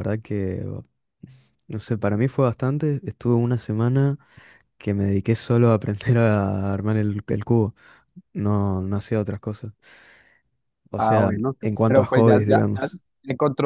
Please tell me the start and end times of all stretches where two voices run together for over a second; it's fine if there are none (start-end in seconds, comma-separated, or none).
11.0-13.0